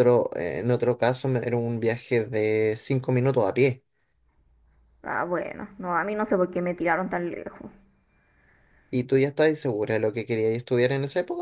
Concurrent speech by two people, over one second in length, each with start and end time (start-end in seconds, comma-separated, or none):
none